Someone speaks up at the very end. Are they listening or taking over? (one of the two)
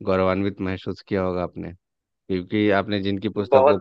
listening